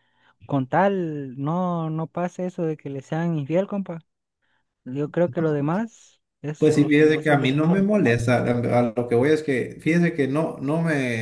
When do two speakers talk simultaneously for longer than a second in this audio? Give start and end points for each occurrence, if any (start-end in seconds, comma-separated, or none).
6.6-7.9